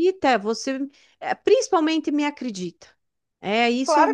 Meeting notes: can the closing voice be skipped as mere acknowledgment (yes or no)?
no